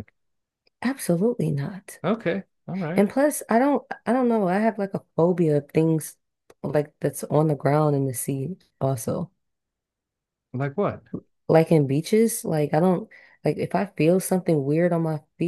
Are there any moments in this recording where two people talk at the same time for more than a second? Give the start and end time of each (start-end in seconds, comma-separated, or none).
none